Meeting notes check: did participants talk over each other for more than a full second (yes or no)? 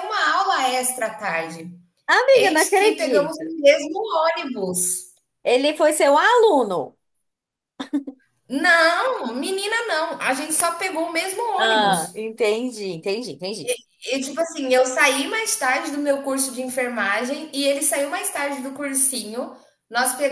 yes